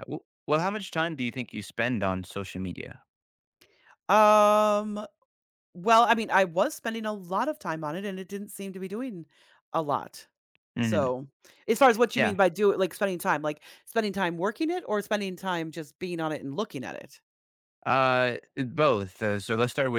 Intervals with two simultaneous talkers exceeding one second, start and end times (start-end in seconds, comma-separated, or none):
none